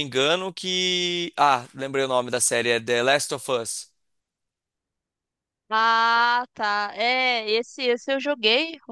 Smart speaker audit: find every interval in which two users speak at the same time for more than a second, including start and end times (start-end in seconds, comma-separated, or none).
none